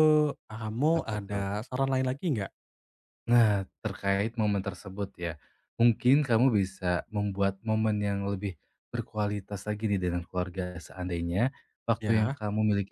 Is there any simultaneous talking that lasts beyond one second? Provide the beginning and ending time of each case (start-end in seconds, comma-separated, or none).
none